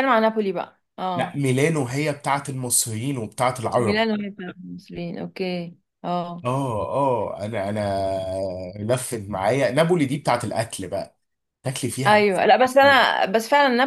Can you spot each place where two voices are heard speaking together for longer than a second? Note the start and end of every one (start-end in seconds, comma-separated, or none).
none